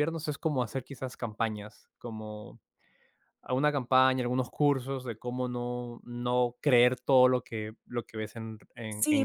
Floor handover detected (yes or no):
yes